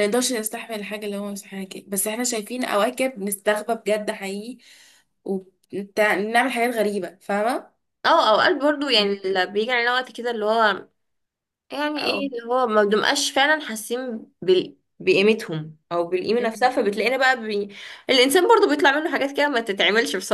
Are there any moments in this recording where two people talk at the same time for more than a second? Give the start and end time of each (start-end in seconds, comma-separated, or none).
none